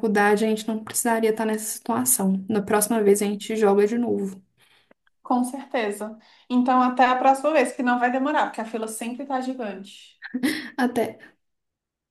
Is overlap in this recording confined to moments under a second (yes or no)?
yes